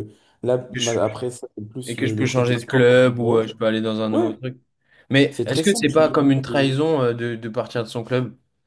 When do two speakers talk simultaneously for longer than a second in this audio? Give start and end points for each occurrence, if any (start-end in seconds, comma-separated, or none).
1.9-3.5, 5.3-6.8